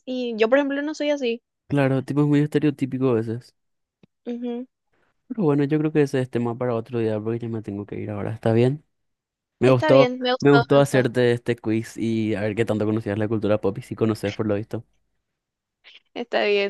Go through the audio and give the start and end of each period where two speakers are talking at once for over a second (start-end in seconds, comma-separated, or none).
9.6-11.0